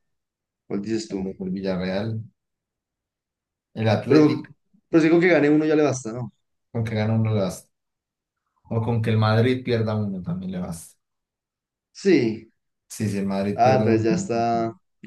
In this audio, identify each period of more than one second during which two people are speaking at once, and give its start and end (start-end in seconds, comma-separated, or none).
none